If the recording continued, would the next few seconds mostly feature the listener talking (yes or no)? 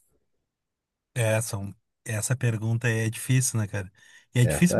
no